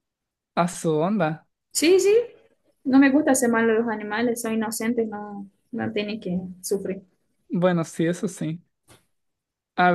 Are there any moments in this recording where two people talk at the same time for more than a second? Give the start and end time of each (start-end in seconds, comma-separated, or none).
none